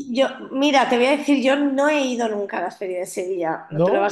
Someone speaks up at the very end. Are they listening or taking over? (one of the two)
listening